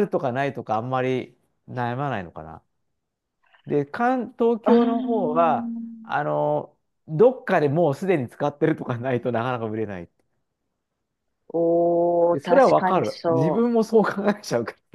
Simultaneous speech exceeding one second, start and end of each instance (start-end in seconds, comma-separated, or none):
4.6-6.1, 12.3-13.7